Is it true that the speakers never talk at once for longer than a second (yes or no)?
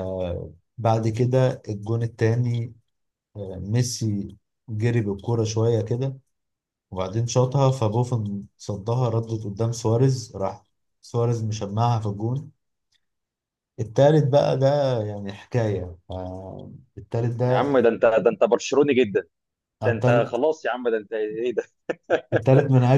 yes